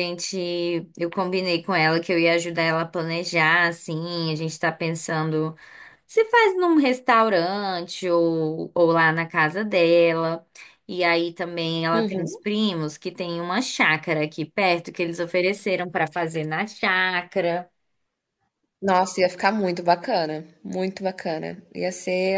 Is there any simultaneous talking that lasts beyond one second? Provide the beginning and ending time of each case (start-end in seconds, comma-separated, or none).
none